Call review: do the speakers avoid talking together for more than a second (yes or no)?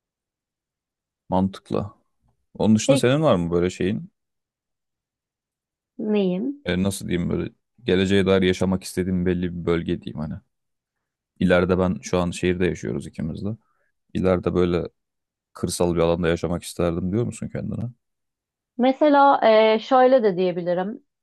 yes